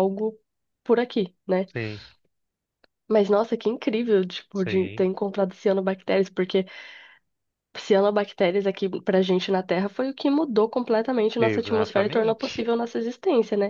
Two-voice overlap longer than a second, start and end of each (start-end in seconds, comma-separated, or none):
11.4-12.7